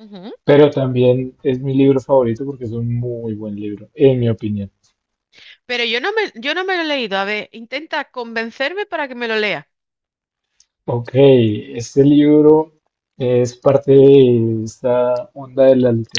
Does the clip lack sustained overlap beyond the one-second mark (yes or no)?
yes